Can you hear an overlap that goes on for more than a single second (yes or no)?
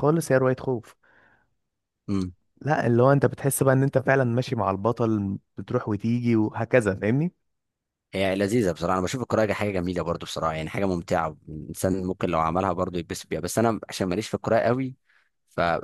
no